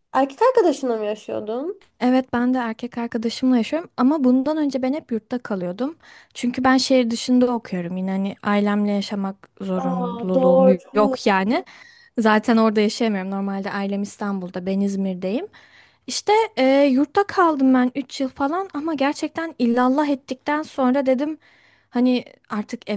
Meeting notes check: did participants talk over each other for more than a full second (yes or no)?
yes